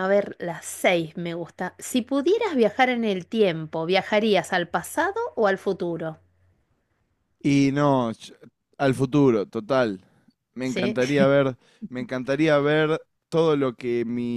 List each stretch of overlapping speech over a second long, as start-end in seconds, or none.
none